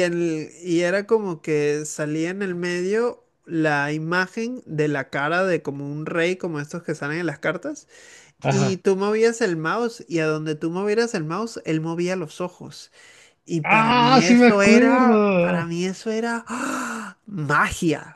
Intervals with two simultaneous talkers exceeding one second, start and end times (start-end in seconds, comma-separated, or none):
13.6-15.7